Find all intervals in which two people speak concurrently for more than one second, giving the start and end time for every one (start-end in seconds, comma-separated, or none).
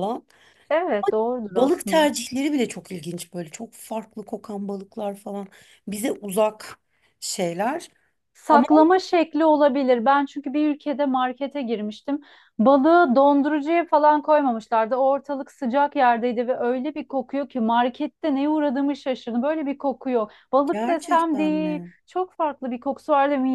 20.6-21.9